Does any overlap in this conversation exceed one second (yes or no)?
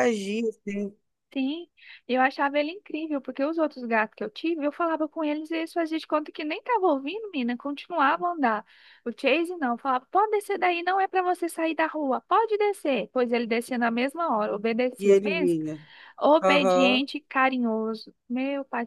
no